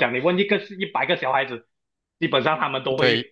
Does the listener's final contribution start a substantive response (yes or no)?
no